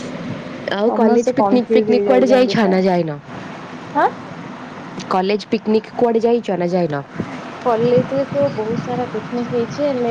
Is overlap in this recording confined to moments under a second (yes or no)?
no